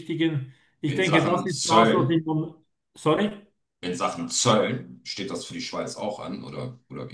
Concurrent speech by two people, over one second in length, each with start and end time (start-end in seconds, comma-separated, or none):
0.9-2.2